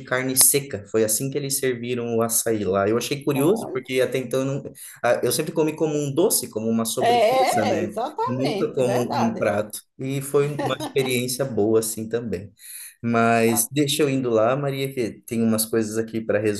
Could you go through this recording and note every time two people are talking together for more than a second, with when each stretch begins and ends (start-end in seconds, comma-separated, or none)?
7.0-9.5